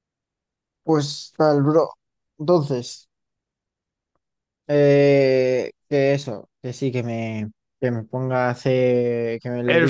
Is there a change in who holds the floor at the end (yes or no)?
yes